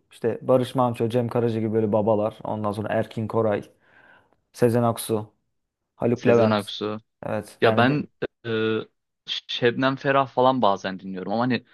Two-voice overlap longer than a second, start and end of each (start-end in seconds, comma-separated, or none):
none